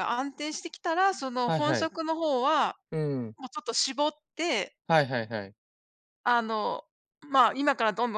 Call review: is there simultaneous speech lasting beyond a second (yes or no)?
no